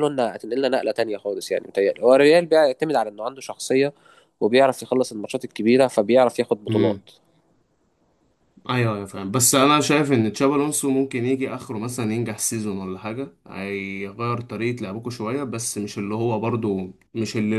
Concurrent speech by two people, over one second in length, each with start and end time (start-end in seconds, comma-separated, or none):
none